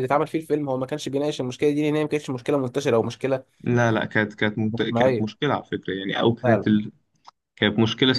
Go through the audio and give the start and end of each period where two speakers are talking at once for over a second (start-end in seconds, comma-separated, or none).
none